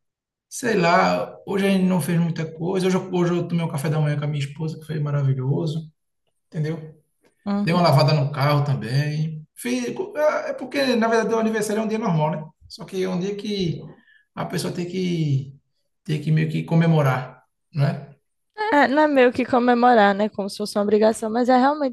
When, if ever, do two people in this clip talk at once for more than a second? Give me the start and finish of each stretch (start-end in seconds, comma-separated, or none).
none